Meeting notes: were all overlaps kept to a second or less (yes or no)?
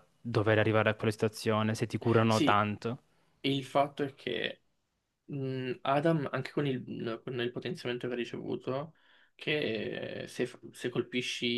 yes